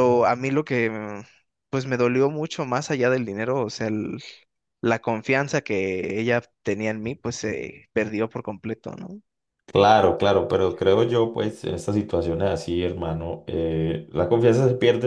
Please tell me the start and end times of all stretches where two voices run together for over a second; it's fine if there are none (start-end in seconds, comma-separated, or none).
none